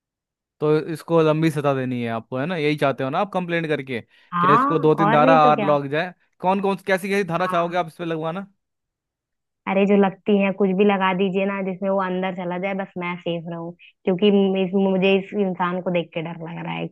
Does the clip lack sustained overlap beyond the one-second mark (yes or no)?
no